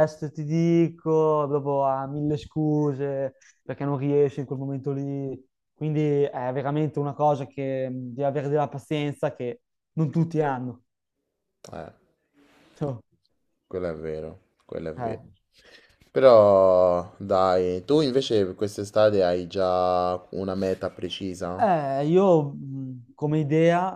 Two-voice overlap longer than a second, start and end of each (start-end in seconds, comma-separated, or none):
none